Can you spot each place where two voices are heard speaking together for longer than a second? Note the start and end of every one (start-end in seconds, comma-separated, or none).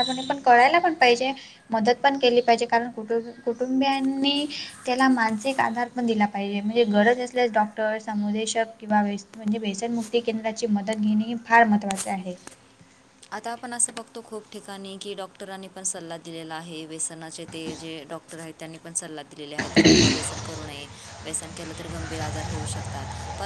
none